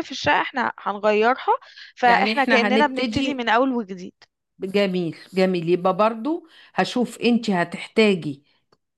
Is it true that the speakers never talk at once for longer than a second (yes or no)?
no